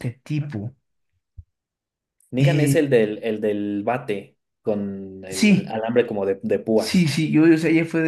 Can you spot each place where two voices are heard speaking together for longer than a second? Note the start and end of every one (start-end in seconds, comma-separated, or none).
none